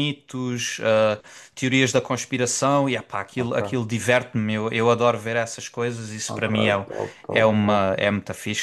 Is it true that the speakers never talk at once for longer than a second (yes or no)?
yes